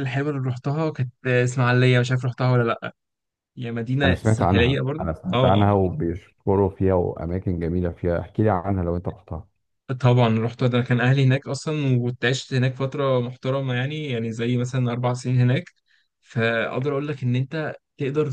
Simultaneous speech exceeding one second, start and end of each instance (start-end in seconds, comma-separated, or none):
4.0-5.7